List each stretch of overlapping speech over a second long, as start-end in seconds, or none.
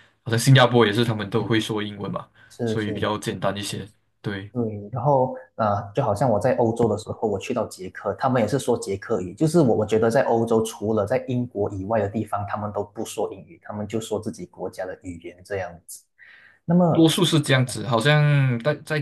none